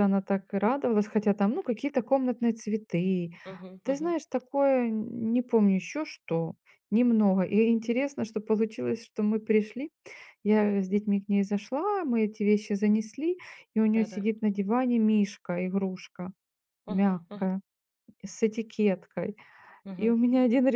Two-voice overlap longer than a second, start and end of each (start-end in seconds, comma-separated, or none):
none